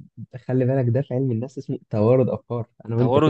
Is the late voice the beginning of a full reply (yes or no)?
yes